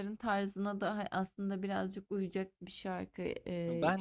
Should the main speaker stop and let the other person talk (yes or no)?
yes